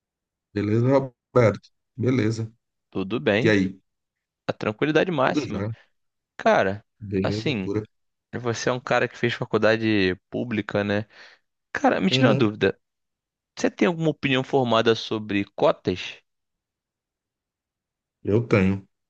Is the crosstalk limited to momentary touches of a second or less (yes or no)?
yes